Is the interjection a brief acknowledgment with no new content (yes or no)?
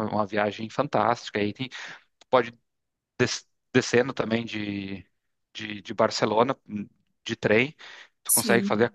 yes